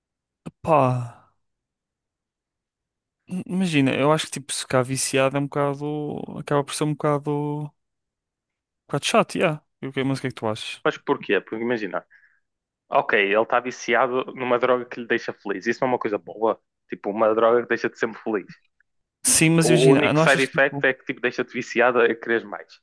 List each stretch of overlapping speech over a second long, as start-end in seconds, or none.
19.7-20.9